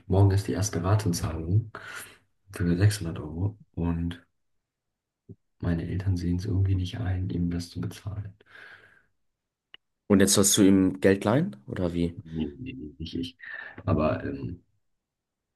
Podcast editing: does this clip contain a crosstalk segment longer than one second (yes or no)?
no